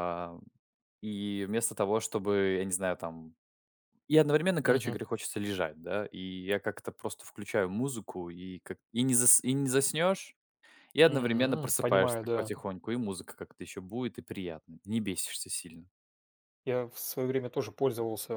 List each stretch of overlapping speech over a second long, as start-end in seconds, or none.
11.1-12.5